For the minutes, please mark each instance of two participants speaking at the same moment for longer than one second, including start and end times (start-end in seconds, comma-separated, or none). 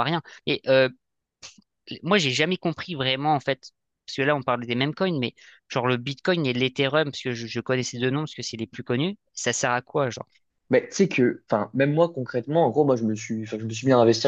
none